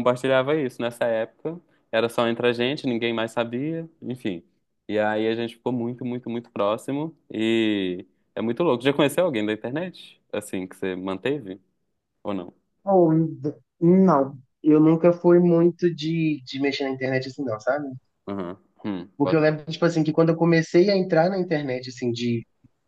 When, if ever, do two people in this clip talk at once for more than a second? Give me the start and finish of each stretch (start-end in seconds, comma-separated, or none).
none